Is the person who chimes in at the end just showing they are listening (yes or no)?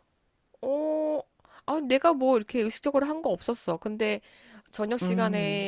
yes